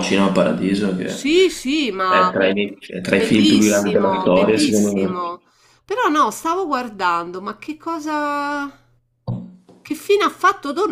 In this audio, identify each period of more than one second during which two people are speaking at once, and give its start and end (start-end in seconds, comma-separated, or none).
3.1-5.3